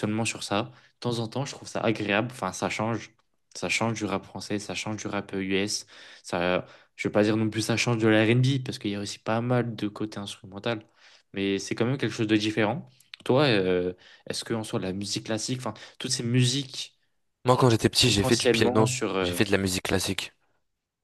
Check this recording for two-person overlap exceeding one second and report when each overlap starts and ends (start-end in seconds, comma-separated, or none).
18.1-19.4